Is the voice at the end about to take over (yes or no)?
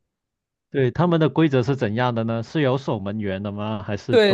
yes